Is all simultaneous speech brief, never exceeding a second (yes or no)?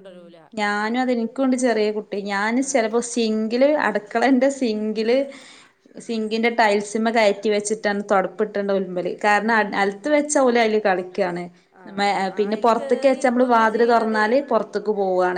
no